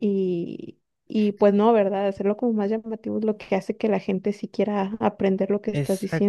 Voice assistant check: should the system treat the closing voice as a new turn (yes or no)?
yes